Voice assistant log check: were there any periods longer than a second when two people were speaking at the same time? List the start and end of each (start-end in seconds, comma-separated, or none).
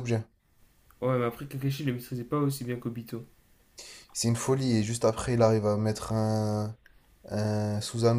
none